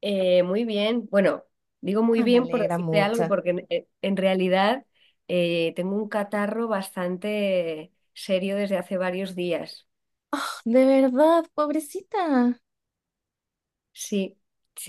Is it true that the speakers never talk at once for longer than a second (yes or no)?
no